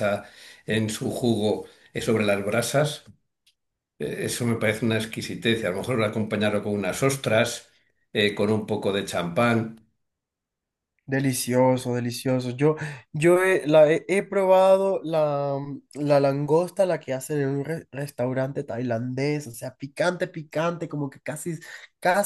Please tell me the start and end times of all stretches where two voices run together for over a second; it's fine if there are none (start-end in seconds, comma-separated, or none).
none